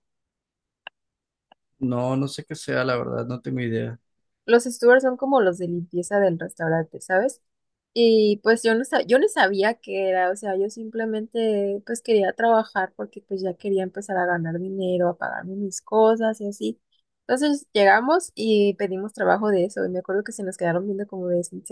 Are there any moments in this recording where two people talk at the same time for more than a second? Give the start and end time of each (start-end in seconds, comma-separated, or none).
none